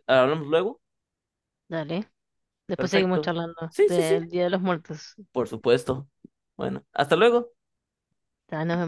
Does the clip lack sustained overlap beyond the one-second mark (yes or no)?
no